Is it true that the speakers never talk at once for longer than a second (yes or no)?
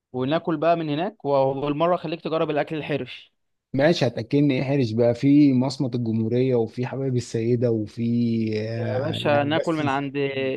no